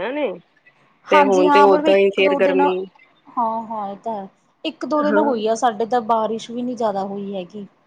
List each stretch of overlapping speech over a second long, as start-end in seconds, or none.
1.1-2.7